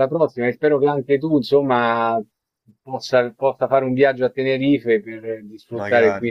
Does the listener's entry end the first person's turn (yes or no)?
no